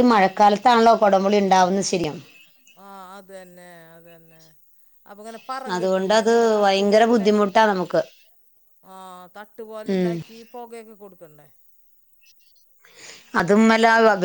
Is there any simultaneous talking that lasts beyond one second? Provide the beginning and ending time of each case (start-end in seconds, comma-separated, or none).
5.8-7.7